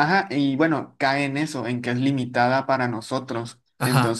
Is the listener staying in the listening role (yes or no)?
yes